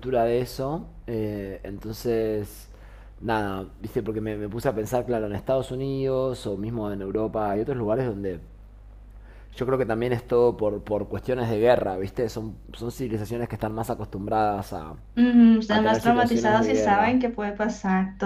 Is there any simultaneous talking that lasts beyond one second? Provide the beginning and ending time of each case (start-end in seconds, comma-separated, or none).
15.7-17.2